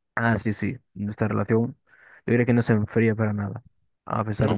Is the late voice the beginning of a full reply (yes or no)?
no